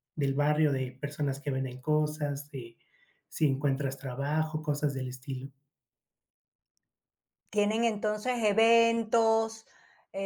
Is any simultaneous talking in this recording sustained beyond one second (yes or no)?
no